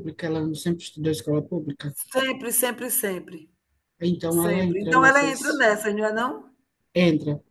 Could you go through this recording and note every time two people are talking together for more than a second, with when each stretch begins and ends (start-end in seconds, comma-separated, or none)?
4.3-5.6